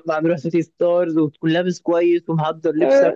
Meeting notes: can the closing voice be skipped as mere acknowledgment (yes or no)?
yes